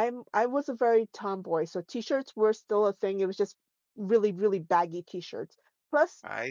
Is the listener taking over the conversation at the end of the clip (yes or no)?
no